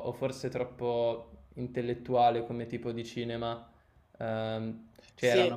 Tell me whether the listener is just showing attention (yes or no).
yes